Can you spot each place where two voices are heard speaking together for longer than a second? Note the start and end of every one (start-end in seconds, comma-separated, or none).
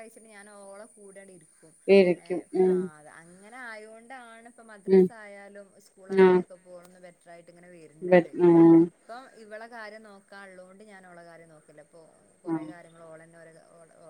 none